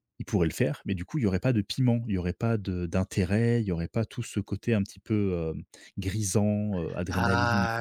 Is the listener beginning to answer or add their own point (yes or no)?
yes